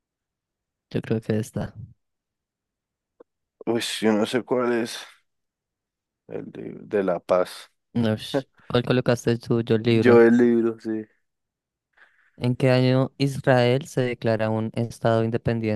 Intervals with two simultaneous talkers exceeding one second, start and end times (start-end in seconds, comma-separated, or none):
none